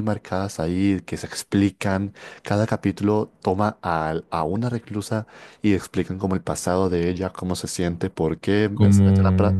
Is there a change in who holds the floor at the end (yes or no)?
no